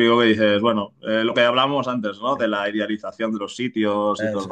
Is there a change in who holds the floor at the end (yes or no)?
no